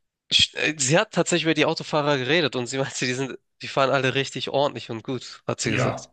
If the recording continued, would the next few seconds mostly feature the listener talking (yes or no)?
yes